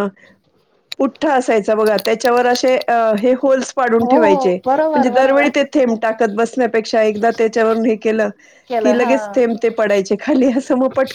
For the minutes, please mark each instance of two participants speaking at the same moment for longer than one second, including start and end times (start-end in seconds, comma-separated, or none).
4.1-5.5